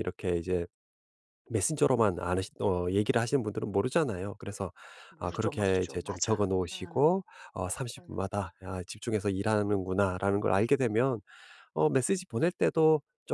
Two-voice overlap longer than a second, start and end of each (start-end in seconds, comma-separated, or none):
5.2-7.2